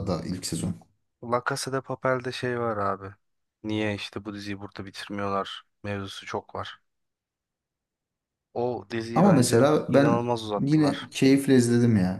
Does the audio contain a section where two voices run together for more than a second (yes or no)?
yes